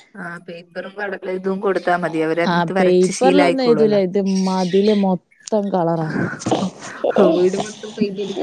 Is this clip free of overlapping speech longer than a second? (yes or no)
no